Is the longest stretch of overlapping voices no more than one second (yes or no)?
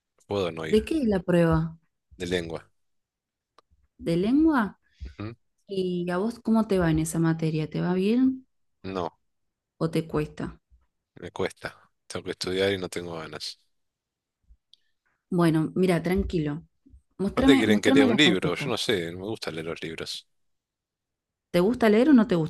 no